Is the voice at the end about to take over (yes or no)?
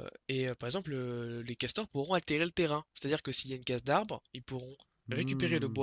yes